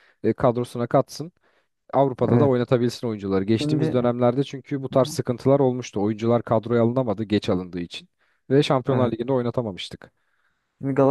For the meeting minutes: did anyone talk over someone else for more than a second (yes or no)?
no